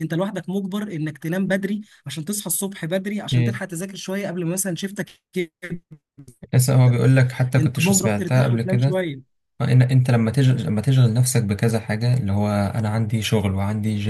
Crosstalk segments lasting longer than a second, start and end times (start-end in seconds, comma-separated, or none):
7.6-9.0